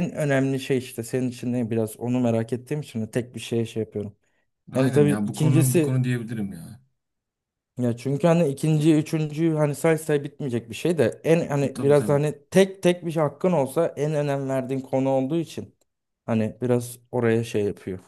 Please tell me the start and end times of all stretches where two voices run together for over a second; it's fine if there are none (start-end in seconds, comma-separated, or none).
4.8-6.0